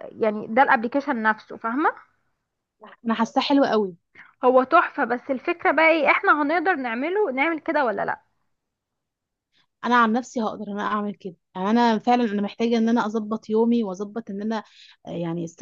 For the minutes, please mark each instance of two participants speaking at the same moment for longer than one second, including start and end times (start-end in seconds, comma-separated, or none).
none